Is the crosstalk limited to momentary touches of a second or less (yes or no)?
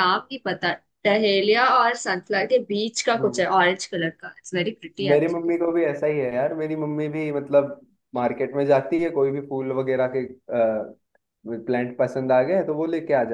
yes